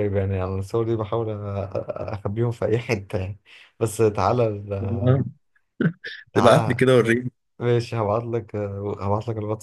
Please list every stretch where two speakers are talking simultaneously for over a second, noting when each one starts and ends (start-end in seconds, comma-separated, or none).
none